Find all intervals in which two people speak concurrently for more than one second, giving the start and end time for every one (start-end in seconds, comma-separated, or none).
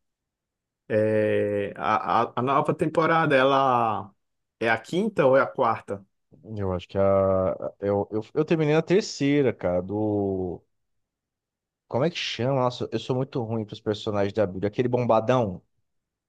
none